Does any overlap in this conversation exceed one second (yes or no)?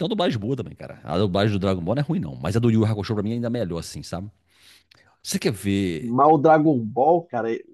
no